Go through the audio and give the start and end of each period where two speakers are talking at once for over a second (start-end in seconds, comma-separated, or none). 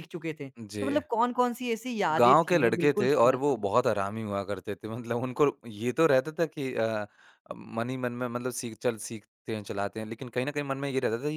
2.2-3.7